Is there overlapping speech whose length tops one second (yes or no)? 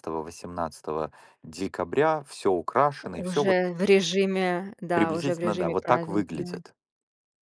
yes